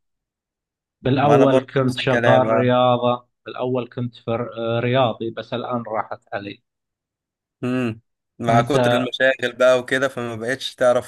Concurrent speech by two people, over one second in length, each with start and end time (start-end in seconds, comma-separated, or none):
1.2-2.7